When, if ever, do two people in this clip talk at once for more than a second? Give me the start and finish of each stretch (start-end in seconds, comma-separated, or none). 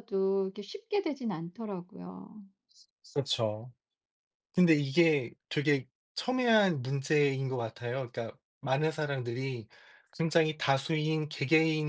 none